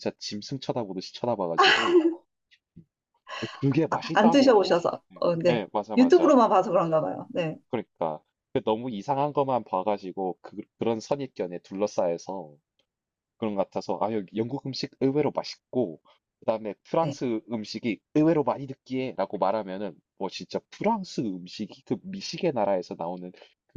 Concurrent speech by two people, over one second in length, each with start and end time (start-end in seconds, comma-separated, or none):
3.9-6.3